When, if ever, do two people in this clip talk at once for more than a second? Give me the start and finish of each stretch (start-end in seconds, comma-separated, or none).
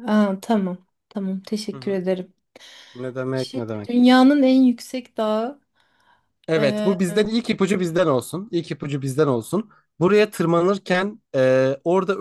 none